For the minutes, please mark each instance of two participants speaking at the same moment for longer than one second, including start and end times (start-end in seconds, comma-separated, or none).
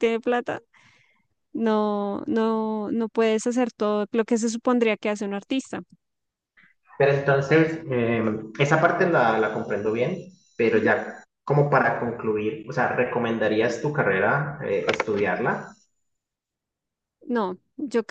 none